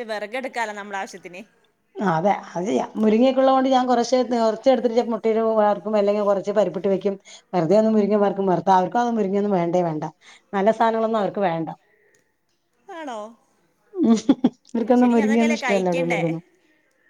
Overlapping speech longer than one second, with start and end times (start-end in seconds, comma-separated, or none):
14.8-16.2